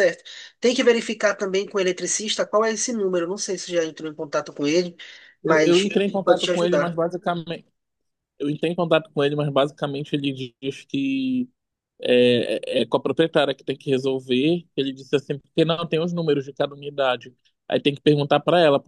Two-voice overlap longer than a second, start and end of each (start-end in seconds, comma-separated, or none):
5.4-7.0